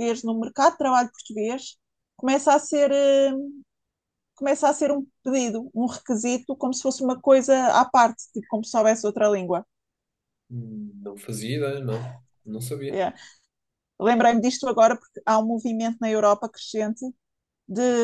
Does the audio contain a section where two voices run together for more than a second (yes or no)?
no